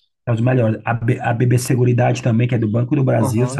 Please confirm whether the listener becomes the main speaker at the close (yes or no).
yes